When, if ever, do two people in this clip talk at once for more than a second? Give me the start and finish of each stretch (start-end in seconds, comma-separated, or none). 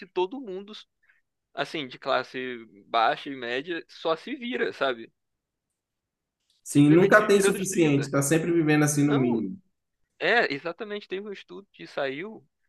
6.7-8.1